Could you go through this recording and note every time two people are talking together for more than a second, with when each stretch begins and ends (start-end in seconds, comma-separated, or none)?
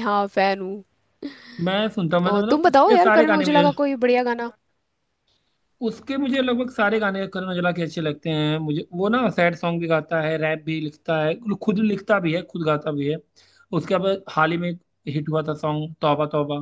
2.3-3.7